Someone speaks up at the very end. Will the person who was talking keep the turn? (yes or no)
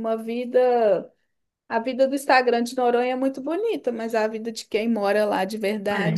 no